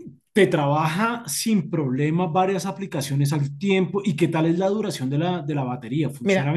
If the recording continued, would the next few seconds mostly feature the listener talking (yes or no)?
yes